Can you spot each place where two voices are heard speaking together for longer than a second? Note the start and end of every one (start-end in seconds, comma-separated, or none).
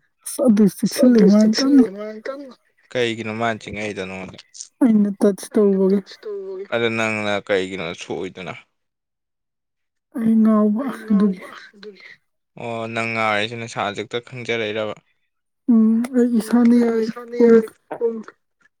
none